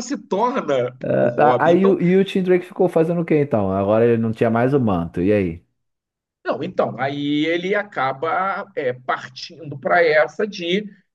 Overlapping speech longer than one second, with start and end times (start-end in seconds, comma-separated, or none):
none